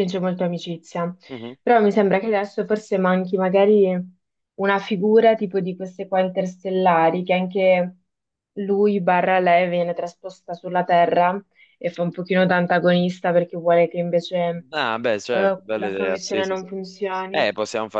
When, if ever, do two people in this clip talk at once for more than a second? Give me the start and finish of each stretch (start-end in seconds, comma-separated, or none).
15.3-16.7